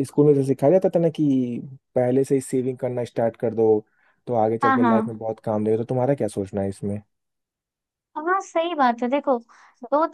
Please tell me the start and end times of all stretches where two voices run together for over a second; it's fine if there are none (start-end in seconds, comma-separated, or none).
none